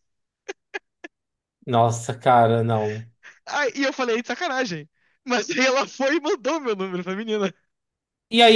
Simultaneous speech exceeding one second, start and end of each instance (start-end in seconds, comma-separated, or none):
none